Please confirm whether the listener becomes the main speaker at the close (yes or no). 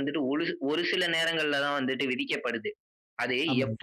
no